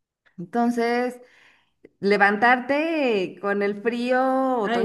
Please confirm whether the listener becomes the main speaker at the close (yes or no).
yes